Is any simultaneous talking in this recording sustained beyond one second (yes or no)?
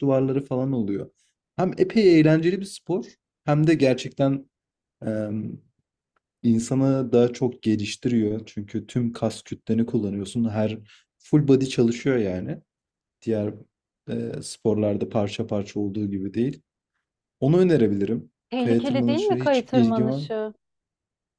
yes